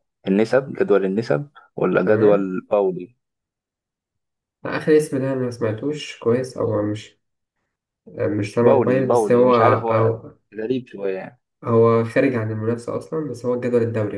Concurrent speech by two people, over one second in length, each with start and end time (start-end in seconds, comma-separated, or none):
8.6-10.1